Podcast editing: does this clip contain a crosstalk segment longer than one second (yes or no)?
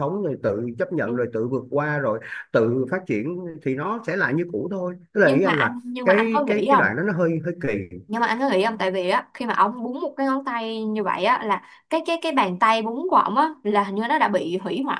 yes